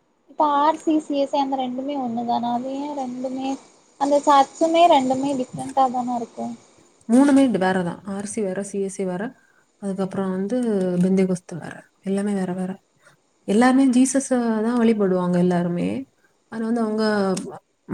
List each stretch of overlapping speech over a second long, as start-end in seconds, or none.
none